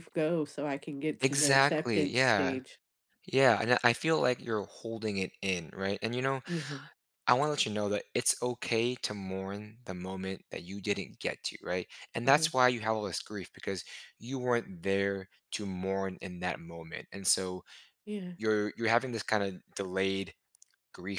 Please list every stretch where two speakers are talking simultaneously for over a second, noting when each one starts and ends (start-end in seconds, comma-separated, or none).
1.2-2.6